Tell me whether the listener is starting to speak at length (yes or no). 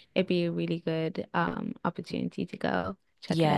yes